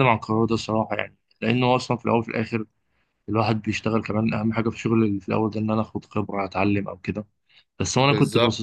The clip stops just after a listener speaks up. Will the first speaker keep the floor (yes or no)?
yes